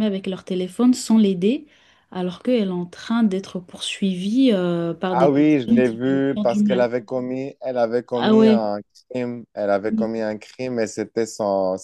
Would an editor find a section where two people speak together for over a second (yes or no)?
yes